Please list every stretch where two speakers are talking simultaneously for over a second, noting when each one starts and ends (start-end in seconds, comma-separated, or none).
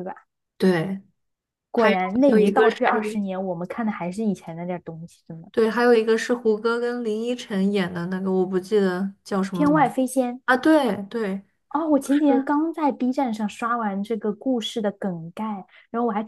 1.8-3.2